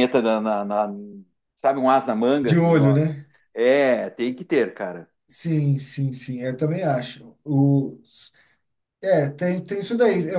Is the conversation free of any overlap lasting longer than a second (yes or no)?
yes